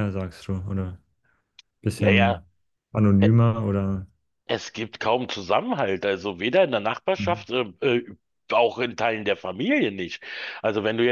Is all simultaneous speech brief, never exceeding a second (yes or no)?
yes